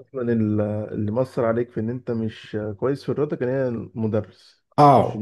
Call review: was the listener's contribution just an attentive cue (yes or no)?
no